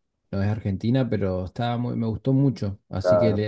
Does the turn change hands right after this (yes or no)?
no